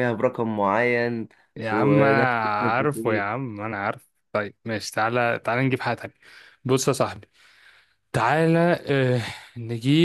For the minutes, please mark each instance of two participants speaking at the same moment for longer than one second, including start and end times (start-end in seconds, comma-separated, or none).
1.7-3.3